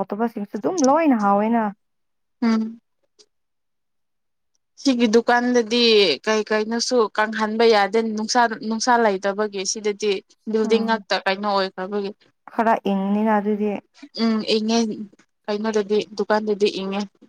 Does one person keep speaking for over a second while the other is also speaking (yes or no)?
no